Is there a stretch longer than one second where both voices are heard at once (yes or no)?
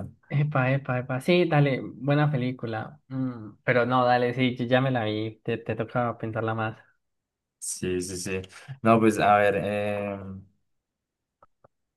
no